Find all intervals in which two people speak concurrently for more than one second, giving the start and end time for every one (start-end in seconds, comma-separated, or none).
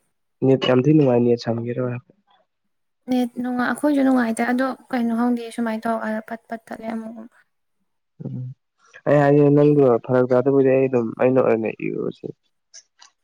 none